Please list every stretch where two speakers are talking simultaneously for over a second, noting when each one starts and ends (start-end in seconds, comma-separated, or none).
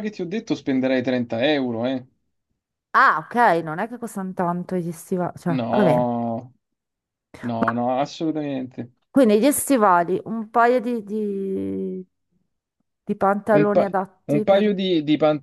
13.5-14.8